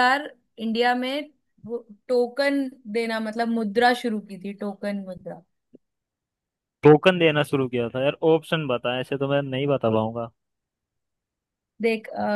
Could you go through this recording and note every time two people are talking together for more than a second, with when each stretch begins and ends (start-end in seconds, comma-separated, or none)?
none